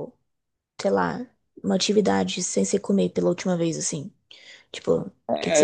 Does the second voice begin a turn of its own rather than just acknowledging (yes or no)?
yes